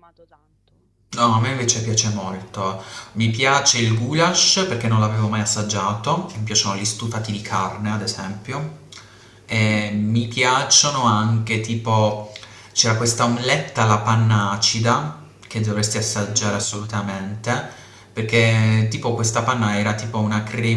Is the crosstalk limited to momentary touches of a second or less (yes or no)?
yes